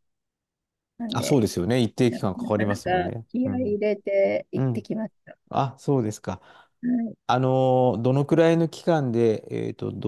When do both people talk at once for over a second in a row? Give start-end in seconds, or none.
2.1-3.8